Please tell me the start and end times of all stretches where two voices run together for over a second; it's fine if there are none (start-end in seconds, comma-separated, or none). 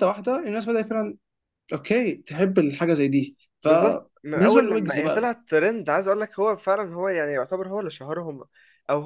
3.6-5.3